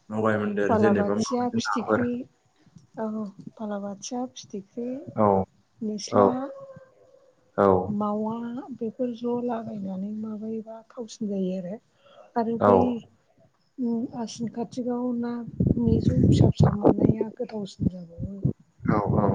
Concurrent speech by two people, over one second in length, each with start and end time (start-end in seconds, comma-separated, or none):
0.7-2.0